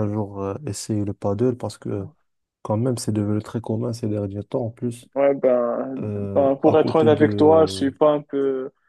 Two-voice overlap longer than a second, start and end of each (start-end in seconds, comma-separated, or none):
6.0-8.0